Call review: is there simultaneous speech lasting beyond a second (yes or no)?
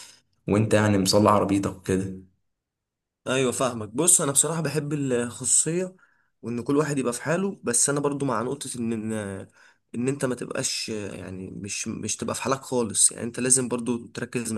no